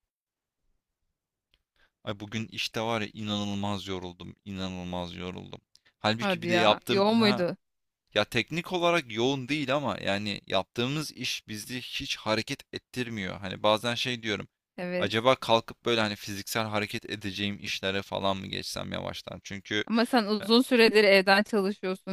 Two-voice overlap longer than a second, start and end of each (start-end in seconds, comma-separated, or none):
6.2-7.5